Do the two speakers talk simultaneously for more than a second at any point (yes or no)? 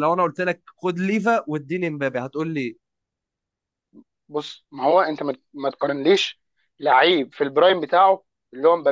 no